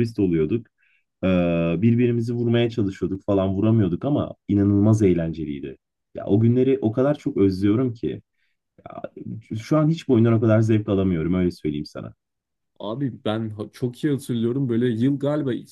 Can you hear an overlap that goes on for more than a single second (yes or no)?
no